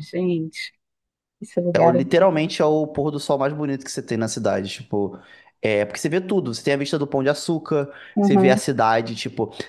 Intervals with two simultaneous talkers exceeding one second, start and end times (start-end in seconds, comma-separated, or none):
none